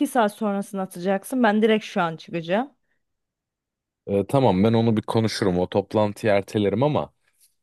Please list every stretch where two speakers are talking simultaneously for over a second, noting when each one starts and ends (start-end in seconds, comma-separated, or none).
none